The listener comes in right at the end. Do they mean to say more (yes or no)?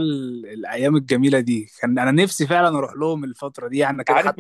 yes